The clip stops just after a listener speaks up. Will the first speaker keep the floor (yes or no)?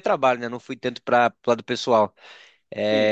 yes